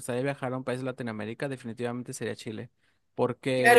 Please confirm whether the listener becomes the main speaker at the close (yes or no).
yes